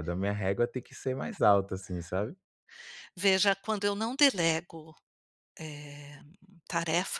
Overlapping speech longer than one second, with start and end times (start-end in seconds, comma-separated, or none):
none